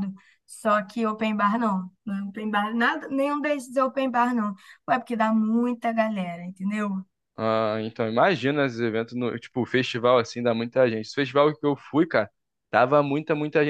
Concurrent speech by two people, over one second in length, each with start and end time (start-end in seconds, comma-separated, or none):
none